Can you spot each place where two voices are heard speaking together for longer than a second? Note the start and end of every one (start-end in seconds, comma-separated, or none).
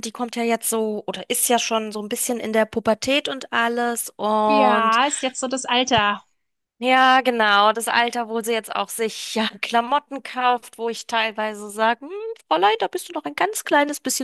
none